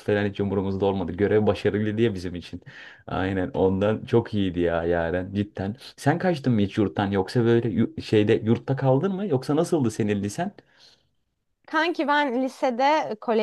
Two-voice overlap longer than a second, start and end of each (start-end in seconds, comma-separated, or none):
none